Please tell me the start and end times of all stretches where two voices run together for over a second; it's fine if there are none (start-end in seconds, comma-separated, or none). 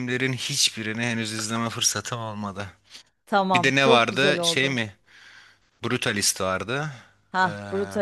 3.5-4.8